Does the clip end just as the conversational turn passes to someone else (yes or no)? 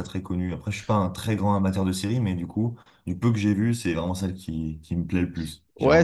yes